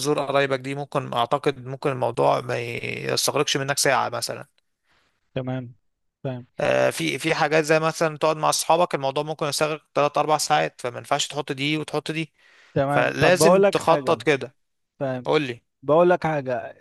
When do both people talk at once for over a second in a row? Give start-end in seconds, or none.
12.9-14.2